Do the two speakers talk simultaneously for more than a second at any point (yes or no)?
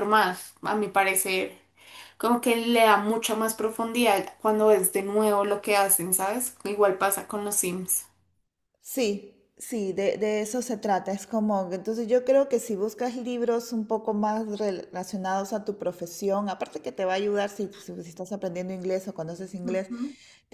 no